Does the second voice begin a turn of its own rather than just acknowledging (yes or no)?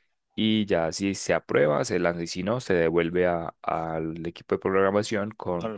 no